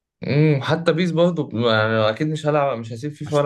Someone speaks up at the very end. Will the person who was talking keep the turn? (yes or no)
no